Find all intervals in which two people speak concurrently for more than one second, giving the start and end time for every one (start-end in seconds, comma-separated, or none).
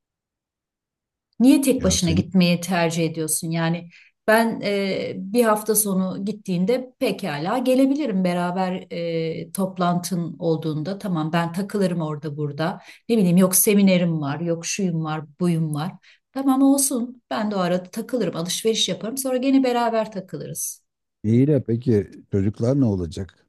none